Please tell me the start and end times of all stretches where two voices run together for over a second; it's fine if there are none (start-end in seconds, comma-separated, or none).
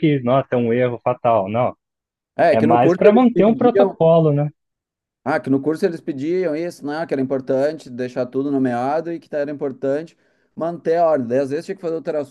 2.5-4.0